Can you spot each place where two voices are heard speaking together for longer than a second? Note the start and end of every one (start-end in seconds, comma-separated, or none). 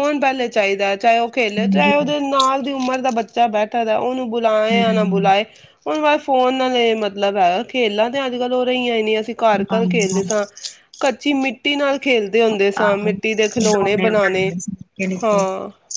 12.8-14.5